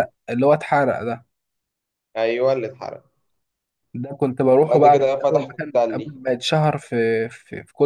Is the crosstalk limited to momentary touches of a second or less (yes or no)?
no